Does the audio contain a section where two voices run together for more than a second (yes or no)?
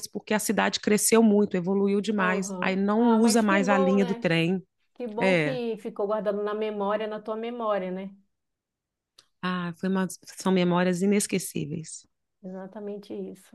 yes